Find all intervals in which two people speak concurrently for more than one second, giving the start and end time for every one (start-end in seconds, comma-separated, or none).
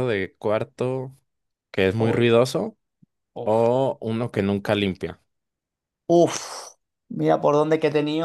none